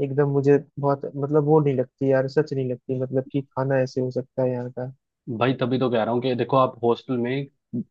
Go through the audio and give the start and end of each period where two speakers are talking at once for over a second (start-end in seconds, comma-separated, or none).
none